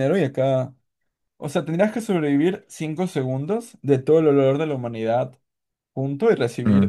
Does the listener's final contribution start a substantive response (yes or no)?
no